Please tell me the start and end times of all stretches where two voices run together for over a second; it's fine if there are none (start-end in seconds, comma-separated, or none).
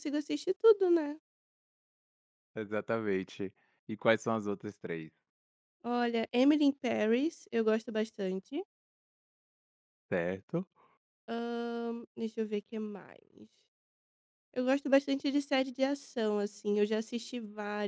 none